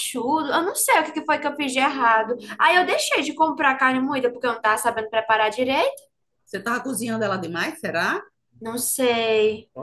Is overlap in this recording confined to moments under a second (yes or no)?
yes